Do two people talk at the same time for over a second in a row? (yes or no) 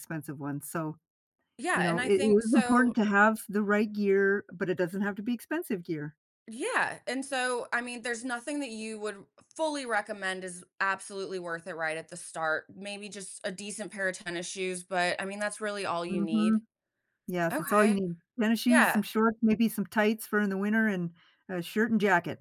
yes